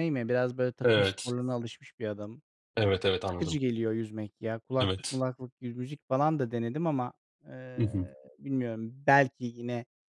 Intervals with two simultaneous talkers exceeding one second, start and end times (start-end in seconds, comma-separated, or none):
none